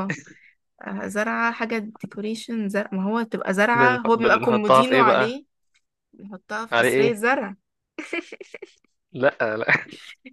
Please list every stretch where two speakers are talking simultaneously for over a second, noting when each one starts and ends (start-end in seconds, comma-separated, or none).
3.8-5.4